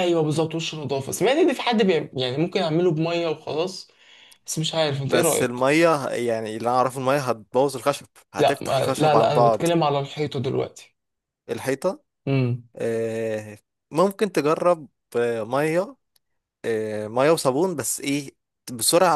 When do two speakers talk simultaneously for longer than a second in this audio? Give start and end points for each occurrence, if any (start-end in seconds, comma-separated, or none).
8.4-9.7